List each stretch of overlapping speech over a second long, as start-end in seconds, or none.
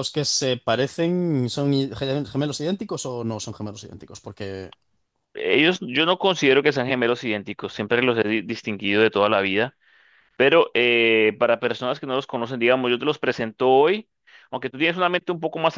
none